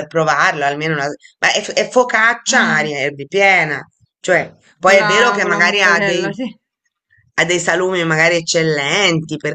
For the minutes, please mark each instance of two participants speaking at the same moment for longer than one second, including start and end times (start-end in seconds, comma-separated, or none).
4.8-6.3